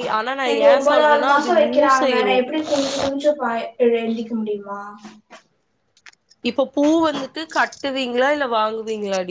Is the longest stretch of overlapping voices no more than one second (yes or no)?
no